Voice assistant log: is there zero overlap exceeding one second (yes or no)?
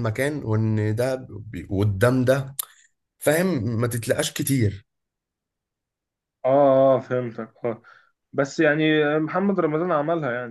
yes